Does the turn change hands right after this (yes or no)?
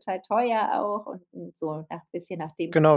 yes